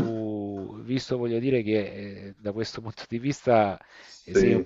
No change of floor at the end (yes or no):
yes